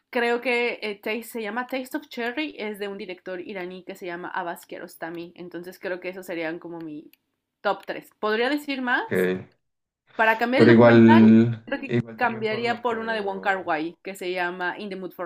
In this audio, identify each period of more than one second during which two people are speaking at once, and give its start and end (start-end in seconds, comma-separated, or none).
10.6-13.8